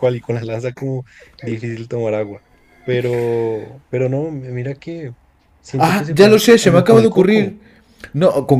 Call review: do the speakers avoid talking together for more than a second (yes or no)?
no